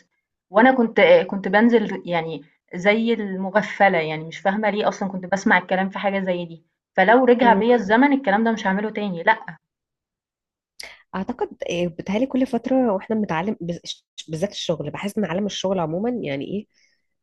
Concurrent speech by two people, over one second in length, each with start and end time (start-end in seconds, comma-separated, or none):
none